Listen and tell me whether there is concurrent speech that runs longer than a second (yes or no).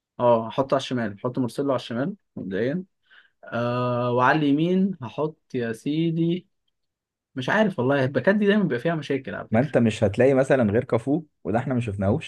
no